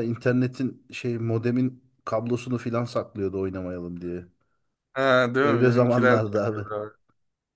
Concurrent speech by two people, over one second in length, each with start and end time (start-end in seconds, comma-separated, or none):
5.4-6.7